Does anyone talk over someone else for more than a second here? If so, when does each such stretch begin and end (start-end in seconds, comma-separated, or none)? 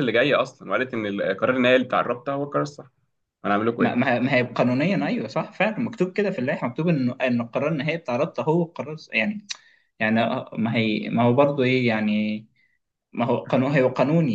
none